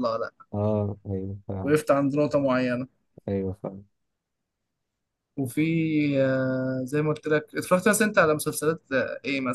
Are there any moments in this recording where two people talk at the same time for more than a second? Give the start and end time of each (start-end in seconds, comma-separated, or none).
none